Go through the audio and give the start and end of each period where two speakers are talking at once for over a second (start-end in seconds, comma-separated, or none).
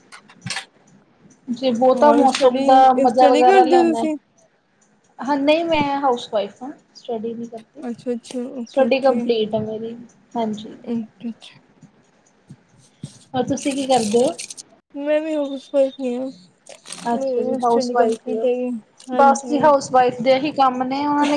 2.0-4.1, 17.2-18.5